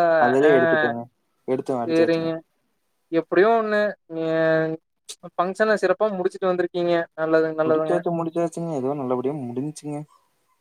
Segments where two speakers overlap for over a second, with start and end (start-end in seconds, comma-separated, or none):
none